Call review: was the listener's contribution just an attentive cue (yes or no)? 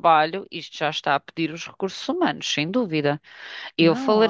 no